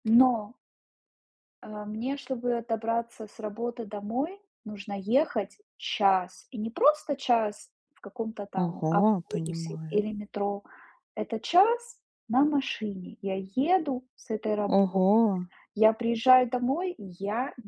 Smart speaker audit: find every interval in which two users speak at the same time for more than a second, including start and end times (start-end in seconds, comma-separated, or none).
8.6-10.0